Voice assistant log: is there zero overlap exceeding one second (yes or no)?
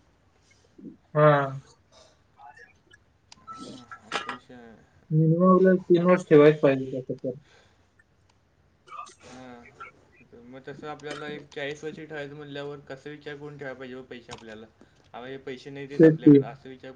yes